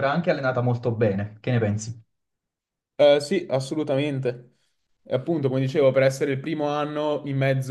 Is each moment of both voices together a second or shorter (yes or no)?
yes